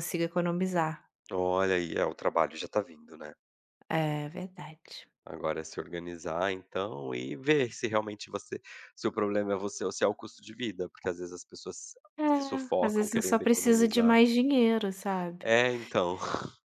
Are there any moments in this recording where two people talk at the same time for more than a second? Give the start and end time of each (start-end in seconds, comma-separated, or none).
12.8-14.2